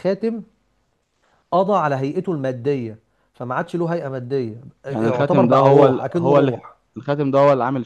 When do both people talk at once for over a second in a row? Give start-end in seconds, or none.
4.9-6.5